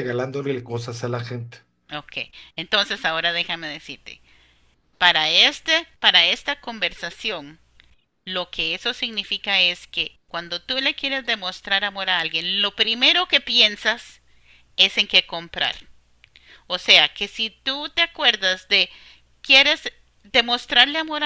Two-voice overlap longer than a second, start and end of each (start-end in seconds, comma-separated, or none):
none